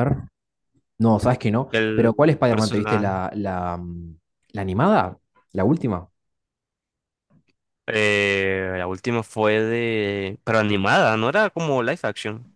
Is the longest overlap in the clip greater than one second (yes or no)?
yes